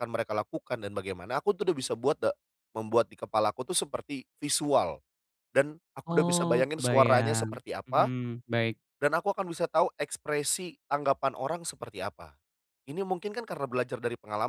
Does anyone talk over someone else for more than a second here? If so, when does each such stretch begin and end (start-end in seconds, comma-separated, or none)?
6.1-8.1